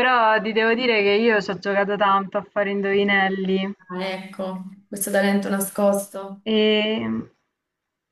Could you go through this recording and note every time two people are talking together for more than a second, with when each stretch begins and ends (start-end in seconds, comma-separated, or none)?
none